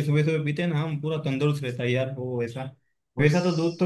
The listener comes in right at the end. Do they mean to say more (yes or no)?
no